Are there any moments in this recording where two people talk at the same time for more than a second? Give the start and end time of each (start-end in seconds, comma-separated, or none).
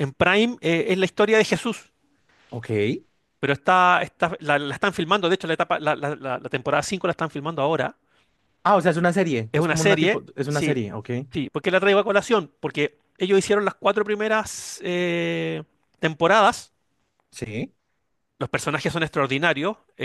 9.5-10.8